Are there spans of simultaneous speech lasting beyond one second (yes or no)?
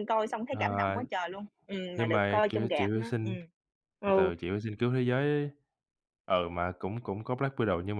yes